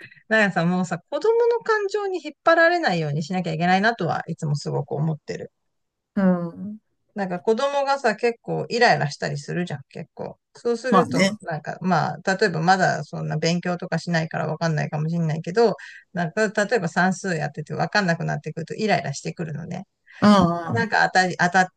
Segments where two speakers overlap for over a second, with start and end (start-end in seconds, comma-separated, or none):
none